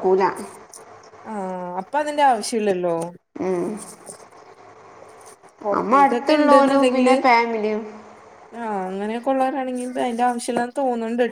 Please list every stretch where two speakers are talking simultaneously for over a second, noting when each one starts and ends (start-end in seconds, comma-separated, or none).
5.7-7.2